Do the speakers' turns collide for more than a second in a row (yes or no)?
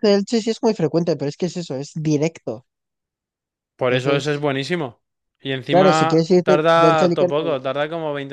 yes